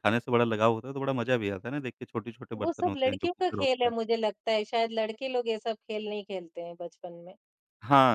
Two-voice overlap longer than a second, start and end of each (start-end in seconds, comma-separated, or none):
2.6-3.9